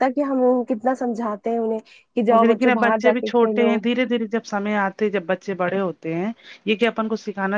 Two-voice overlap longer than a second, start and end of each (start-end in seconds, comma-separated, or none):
2.3-3.8